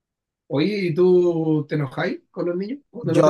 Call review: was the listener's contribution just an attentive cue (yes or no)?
no